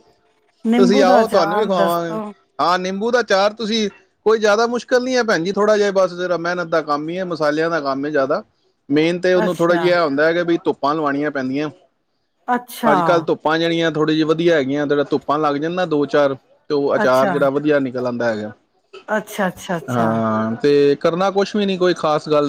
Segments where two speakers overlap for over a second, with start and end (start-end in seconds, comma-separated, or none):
0.8-2.2